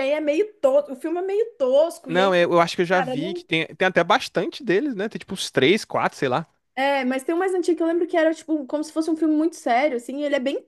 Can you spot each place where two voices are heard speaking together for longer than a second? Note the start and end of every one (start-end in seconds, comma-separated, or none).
2.1-3.5